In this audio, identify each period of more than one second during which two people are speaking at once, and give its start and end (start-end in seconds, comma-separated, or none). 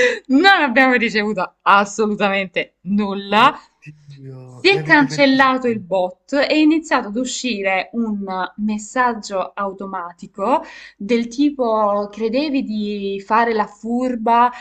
4.4-5.8